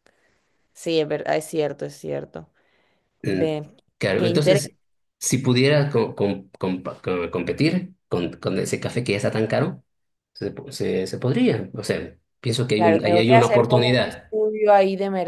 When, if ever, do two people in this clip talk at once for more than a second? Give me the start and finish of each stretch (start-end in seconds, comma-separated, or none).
12.8-14.3